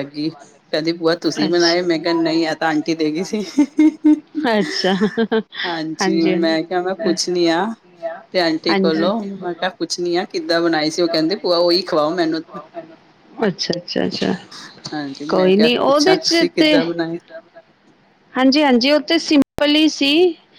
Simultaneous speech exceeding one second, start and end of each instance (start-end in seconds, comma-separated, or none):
15.3-16.8